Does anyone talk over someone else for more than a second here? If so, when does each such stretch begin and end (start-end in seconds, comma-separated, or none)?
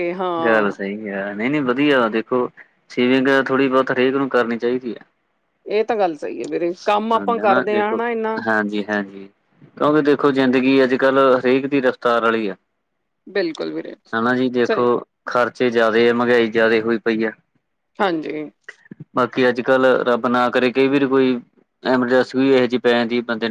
none